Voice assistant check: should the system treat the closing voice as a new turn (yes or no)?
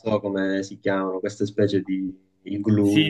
yes